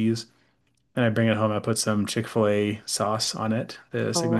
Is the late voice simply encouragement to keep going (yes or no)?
no